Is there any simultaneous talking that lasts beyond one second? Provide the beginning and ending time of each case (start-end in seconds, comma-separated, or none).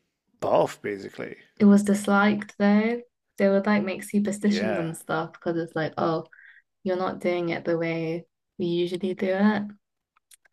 none